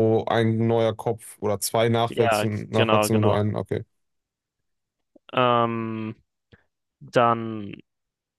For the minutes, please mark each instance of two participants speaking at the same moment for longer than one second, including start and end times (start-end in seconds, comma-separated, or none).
2.1-3.4